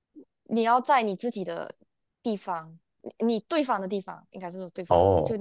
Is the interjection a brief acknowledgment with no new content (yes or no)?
yes